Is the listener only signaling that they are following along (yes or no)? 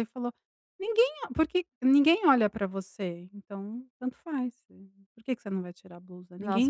no